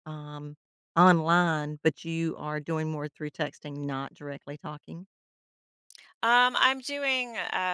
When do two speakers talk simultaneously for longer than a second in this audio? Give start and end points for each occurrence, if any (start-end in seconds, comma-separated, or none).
none